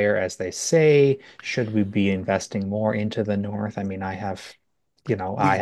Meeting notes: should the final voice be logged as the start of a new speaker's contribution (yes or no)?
no